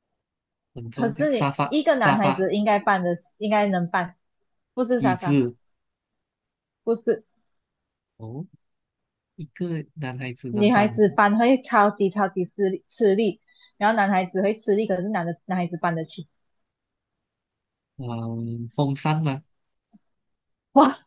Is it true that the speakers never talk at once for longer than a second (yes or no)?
no